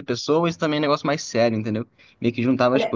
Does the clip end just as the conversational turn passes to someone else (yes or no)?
yes